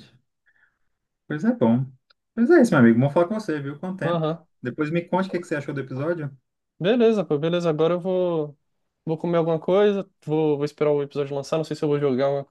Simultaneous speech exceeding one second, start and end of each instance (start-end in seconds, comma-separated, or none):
none